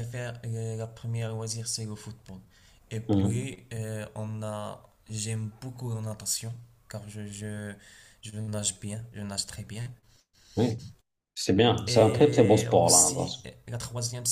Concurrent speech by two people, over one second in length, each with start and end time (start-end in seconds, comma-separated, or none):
11.9-13.4